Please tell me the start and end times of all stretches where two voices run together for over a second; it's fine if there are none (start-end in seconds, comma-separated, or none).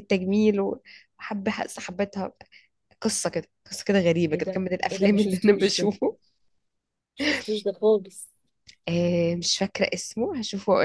4.3-5.9